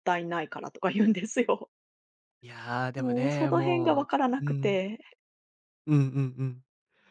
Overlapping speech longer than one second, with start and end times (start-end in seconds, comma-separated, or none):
3.0-4.8